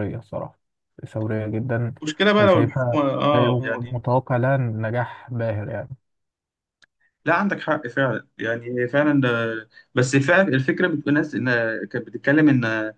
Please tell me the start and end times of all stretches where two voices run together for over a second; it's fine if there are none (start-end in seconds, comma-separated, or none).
2.4-4.0